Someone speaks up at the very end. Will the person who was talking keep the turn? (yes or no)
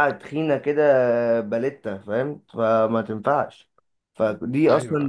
yes